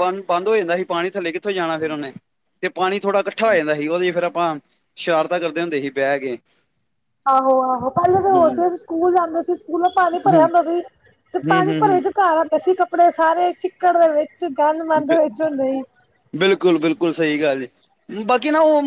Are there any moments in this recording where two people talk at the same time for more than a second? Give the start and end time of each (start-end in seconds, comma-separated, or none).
none